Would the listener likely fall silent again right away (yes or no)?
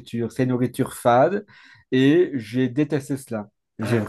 yes